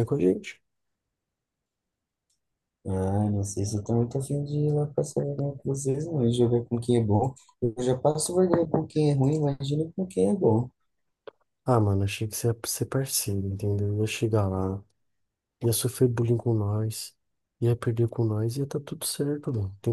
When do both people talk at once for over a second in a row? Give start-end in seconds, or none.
none